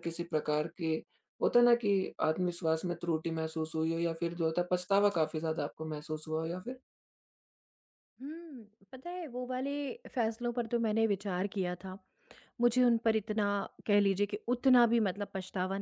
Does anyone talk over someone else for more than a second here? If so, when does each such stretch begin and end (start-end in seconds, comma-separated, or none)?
none